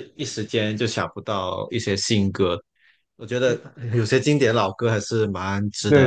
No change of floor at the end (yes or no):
no